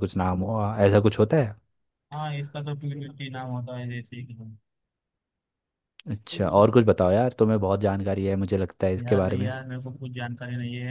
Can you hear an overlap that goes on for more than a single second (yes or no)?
no